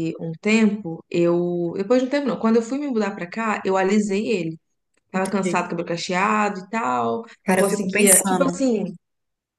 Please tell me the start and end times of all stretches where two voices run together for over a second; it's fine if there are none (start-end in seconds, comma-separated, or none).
7.4-8.7